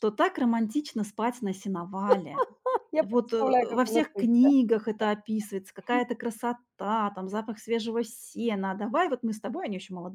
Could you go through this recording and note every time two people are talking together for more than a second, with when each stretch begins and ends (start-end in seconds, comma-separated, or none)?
3.0-4.5